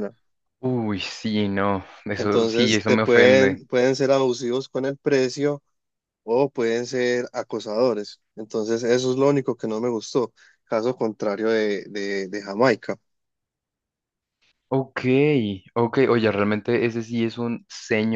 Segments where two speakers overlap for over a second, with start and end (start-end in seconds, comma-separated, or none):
2.2-3.6